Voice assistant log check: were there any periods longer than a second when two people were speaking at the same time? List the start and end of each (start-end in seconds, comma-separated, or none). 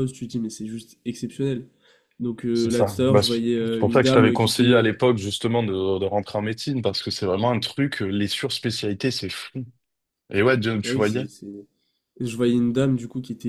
2.5-4.9